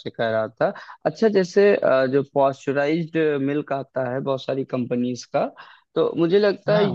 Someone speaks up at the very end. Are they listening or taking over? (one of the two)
listening